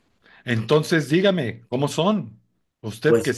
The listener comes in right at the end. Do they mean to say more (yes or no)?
no